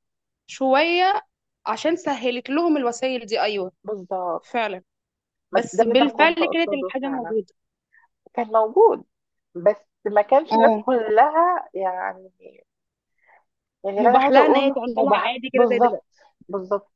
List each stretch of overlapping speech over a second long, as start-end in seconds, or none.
5.5-7.3, 14.0-16.1